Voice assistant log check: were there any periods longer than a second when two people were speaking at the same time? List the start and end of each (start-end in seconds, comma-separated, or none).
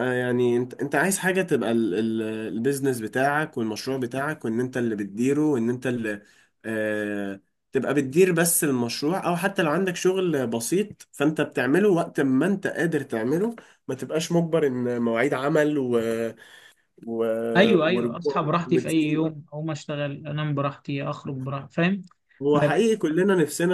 17.9-19.2